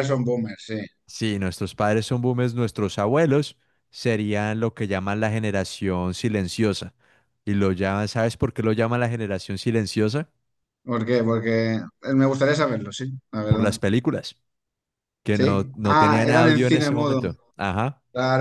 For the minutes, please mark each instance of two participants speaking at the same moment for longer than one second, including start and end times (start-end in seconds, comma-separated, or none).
15.3-17.2